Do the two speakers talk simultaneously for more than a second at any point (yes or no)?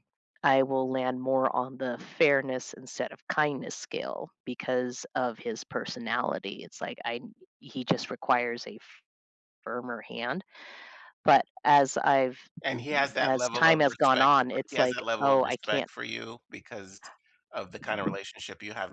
yes